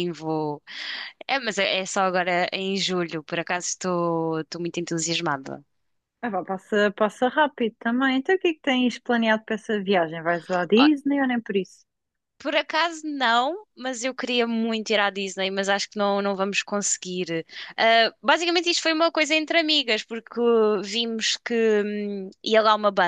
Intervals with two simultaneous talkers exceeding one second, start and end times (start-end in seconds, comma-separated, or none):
none